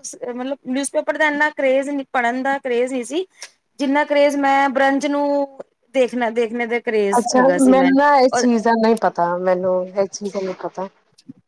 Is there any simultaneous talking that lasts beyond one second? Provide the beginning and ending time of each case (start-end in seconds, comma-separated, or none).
none